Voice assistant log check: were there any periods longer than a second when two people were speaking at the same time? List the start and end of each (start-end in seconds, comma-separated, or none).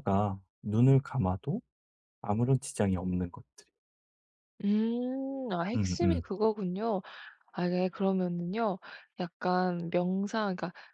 none